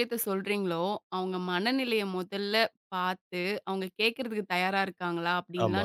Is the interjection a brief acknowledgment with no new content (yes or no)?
yes